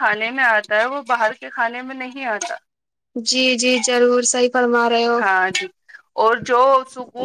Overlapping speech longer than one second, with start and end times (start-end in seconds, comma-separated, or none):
none